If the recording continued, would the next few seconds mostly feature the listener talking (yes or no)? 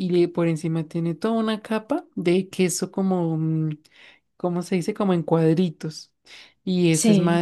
no